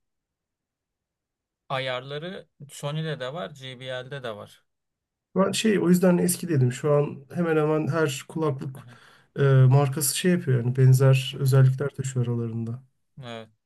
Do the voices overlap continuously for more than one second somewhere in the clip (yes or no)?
no